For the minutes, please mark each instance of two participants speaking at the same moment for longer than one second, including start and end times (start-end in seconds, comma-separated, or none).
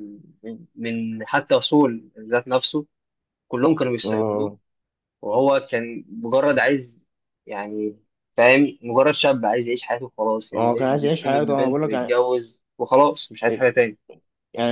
10.5-12.2